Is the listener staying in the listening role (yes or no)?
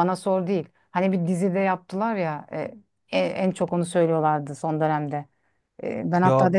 yes